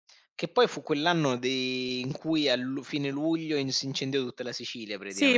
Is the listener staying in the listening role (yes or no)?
no